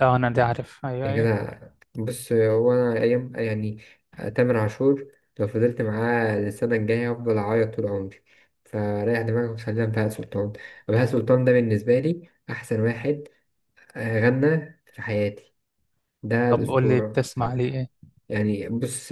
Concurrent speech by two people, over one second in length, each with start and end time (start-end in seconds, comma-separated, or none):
16.5-17.8